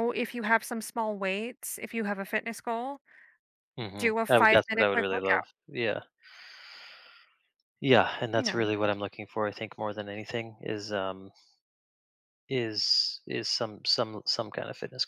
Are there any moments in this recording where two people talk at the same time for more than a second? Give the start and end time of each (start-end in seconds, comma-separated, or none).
4.0-5.4